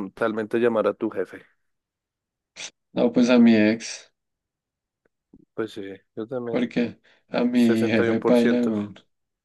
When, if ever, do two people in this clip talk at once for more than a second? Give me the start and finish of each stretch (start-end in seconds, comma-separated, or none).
7.5-8.7